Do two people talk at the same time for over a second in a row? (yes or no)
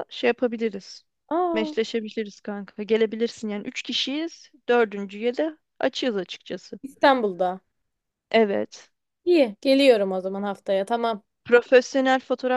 no